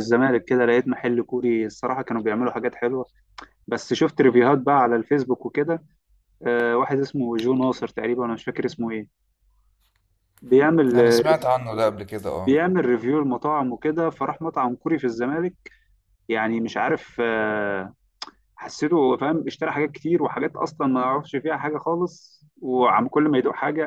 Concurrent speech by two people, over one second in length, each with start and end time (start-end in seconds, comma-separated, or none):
none